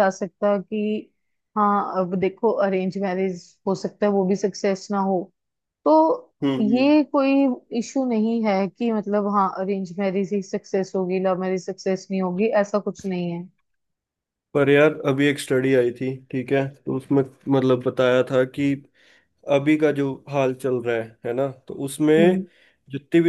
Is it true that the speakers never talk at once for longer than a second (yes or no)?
yes